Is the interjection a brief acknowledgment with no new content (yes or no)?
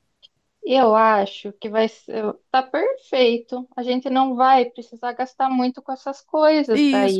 no